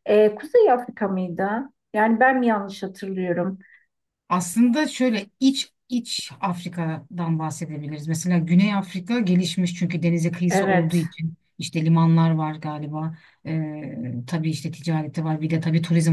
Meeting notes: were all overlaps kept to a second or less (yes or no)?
yes